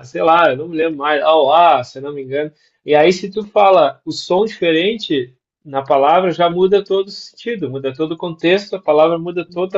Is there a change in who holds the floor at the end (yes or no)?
no